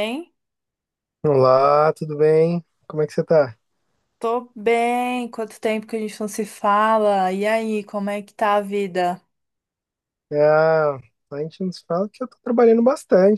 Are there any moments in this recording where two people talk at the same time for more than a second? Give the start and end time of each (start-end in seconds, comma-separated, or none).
none